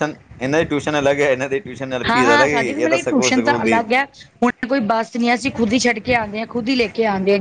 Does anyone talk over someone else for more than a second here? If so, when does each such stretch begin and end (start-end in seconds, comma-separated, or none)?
2.1-3.8